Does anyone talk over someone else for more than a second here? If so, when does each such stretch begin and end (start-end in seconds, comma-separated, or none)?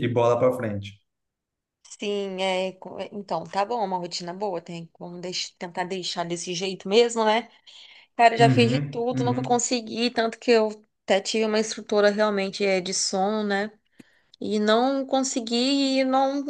8.4-9.7